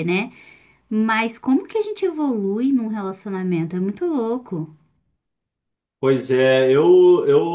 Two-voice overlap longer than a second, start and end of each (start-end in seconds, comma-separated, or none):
none